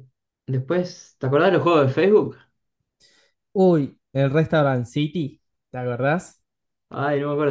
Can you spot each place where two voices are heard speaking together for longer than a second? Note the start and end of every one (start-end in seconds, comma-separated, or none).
none